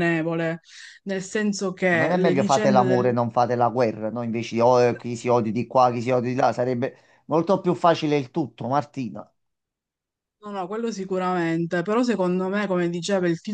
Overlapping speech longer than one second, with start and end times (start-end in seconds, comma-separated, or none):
1.9-3.1